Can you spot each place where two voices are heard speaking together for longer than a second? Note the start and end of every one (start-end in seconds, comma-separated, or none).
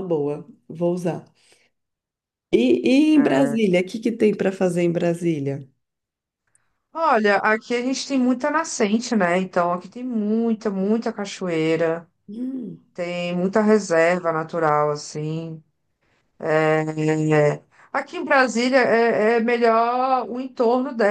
none